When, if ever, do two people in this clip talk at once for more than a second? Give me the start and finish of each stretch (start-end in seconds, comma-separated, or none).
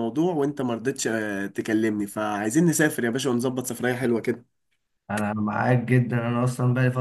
none